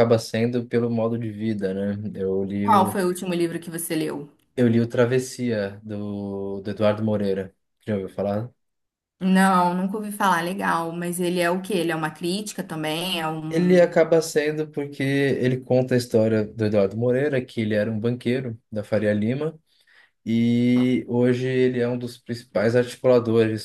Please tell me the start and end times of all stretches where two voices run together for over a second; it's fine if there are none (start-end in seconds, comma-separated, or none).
none